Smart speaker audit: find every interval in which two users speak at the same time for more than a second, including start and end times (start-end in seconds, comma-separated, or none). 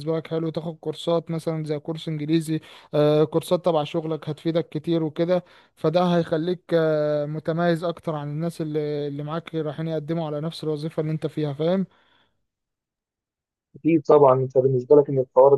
none